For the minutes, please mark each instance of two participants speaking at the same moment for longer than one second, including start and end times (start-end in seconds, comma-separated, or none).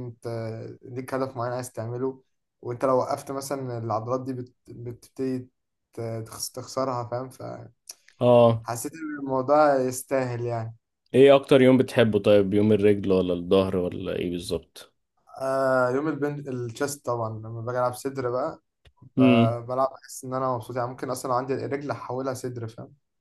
none